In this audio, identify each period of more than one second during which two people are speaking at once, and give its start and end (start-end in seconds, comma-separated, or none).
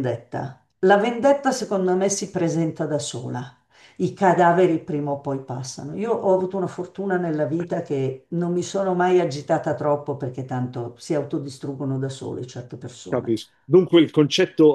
none